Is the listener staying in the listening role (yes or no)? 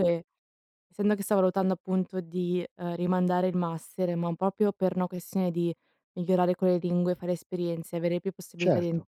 no